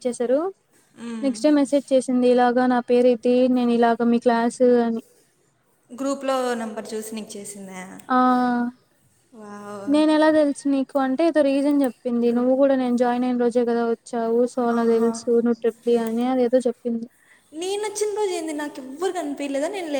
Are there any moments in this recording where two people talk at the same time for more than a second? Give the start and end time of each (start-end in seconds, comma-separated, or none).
none